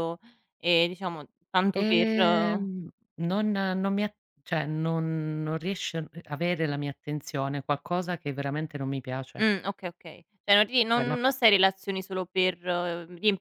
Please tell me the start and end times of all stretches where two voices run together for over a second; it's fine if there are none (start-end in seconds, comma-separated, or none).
none